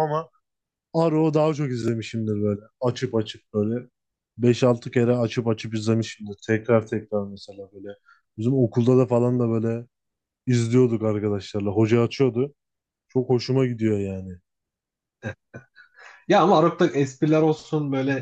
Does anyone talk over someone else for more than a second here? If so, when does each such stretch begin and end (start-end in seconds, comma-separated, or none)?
none